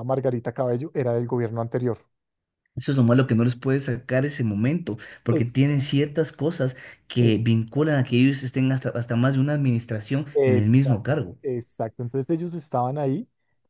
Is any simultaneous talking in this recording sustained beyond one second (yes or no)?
no